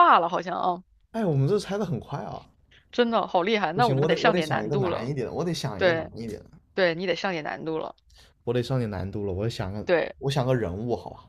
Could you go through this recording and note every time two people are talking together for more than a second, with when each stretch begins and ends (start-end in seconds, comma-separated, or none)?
3.7-5.1